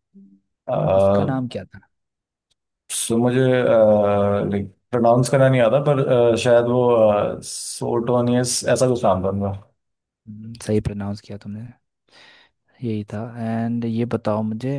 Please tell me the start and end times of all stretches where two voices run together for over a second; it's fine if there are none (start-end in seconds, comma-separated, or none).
none